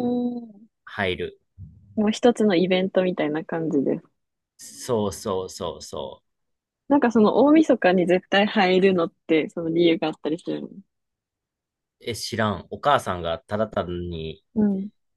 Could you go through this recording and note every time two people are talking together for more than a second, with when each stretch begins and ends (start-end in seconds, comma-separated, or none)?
none